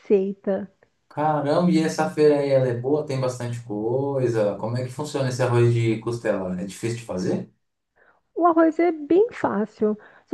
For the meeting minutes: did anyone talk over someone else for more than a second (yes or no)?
no